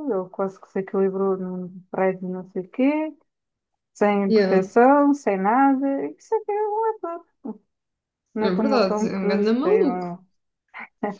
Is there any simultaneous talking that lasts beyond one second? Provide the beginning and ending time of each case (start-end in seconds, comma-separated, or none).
8.4-10.1